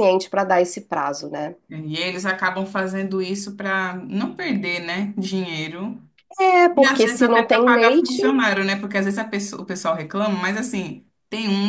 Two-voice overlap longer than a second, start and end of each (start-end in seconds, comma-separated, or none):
6.8-8.2